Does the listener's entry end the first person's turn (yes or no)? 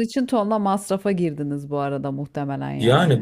yes